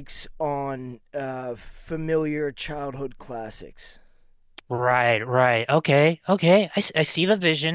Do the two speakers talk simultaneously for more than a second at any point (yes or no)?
no